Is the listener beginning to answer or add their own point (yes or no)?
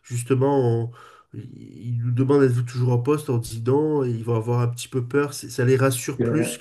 no